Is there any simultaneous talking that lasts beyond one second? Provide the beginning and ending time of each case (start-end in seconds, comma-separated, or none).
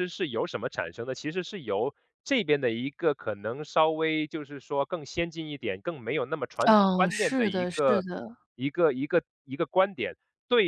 6.7-8.0